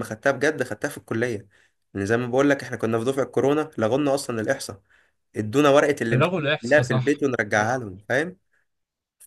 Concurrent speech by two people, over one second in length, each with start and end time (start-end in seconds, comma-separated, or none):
6.1-7.8